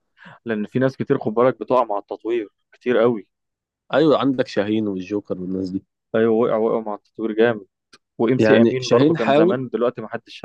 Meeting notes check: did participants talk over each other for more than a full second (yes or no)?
yes